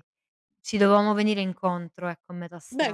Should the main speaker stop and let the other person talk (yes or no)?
yes